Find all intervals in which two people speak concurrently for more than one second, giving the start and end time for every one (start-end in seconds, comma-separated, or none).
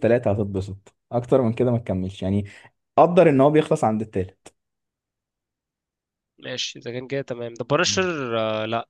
none